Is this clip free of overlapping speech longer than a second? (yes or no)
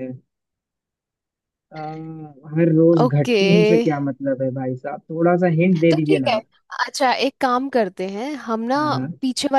yes